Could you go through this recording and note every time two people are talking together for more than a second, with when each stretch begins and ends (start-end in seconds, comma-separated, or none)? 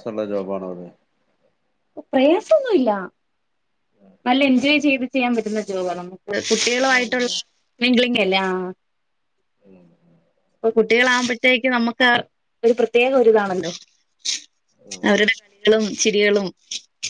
none